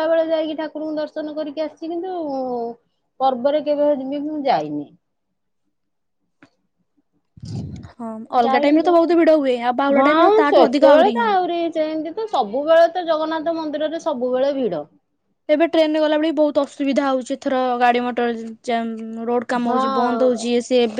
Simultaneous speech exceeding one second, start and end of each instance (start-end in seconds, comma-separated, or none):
8.4-10.8